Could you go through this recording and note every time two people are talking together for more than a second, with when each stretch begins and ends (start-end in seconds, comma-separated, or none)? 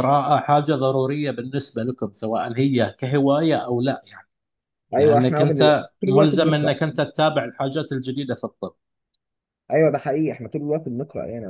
5.0-6.8